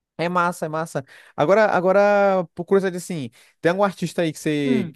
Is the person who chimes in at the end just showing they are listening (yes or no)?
yes